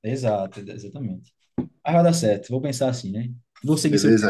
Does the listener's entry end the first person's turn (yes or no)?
yes